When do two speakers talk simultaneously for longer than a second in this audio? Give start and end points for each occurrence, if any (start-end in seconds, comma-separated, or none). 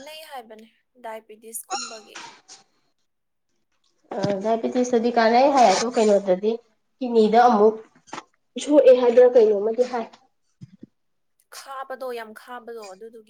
none